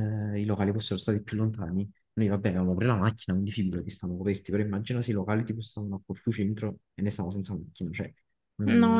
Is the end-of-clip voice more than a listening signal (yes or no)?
yes